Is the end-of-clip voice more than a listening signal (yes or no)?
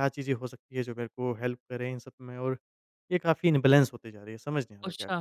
yes